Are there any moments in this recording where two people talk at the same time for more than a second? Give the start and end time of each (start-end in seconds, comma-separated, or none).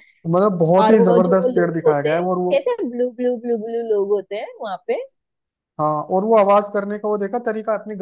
0.8-2.5